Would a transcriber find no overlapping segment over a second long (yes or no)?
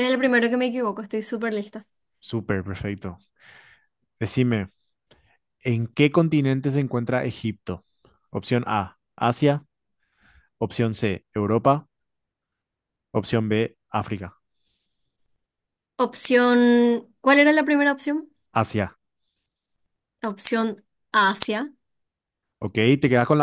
yes